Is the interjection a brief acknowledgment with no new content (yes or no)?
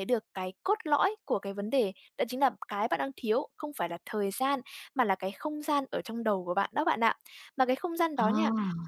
yes